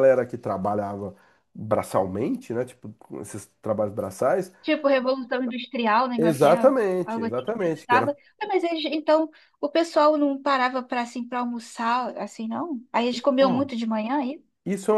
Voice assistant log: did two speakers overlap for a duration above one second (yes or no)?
yes